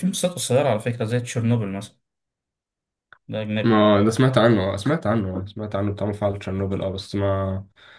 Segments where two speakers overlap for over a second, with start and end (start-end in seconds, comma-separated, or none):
none